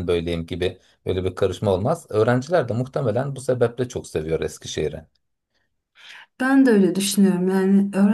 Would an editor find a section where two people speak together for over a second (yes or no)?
no